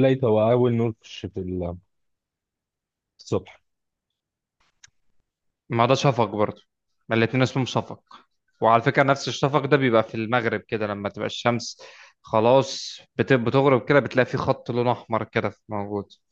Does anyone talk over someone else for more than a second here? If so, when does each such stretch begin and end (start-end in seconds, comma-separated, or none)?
none